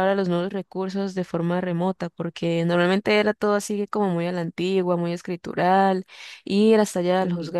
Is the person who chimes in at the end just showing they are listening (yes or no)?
yes